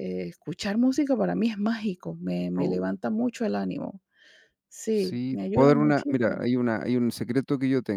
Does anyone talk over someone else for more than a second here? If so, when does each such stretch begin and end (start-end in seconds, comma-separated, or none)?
4.9-6.5